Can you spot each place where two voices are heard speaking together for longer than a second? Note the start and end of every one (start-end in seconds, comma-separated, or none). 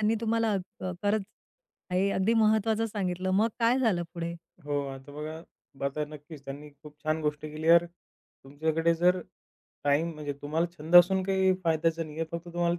none